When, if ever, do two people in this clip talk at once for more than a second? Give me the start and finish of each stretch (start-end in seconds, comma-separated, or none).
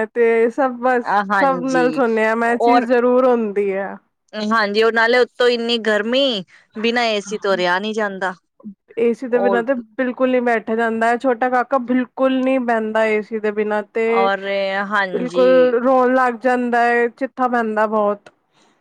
none